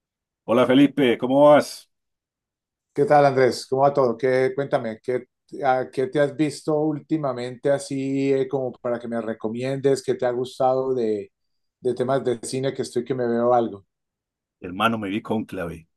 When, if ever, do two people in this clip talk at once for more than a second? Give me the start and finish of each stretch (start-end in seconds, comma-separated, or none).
none